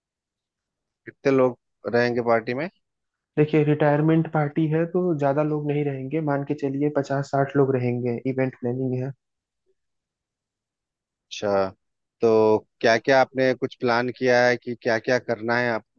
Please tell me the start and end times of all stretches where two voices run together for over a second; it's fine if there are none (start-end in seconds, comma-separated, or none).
none